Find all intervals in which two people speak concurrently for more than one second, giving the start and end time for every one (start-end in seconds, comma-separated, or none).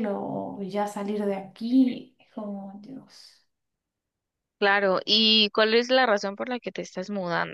none